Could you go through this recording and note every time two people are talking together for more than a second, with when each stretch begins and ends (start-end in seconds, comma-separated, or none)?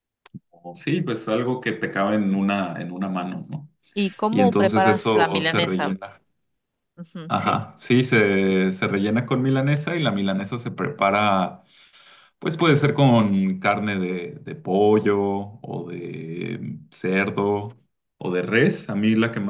4.3-6.0